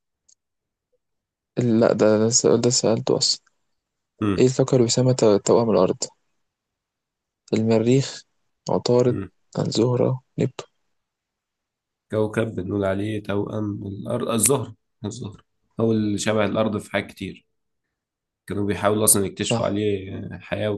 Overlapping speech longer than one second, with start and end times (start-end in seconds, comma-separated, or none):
none